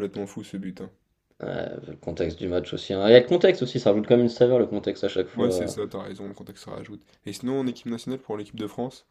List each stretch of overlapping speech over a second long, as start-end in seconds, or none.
none